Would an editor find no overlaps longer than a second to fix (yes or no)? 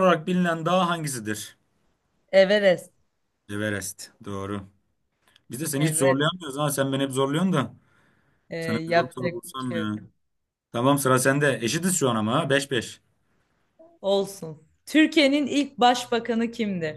no